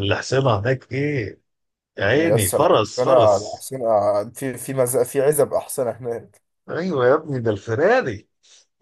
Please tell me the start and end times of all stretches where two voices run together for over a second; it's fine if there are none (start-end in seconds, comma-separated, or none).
2.1-3.7